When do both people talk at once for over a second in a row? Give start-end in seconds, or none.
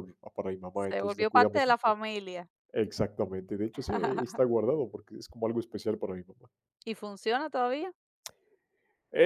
0.7-2.0